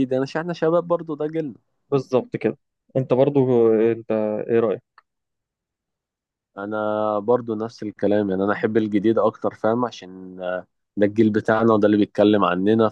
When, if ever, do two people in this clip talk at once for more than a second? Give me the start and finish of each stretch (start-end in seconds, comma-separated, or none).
none